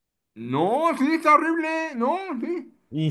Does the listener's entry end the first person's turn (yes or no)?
yes